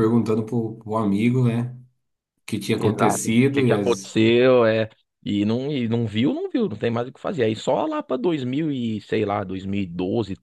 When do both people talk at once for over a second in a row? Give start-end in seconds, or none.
2.8-4.2